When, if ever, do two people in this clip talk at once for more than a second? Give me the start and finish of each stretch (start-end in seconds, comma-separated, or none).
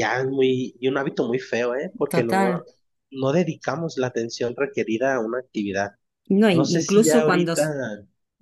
6.5-7.7